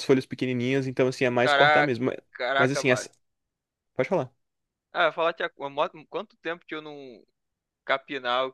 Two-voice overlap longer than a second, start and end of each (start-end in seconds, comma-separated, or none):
none